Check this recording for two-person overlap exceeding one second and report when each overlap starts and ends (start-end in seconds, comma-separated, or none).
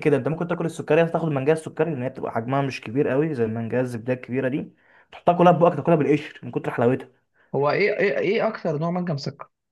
none